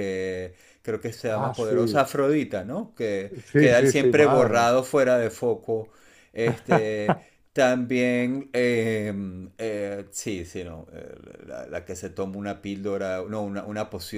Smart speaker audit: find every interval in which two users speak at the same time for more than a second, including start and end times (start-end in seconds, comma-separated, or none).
3.5-4.7